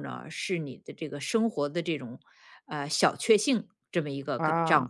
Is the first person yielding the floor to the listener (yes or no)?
no